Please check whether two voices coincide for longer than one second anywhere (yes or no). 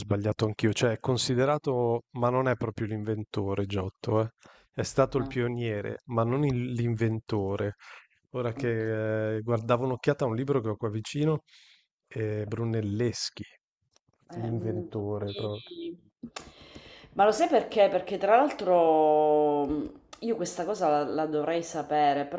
yes